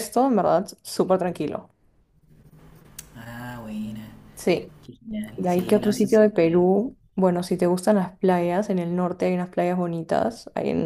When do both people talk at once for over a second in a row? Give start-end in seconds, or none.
5.3-6.7